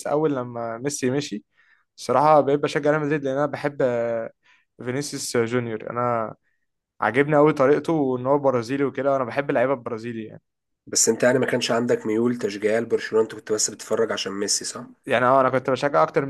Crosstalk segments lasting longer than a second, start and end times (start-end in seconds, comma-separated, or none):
none